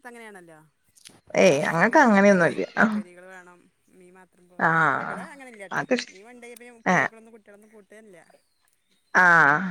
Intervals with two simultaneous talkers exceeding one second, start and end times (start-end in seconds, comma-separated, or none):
none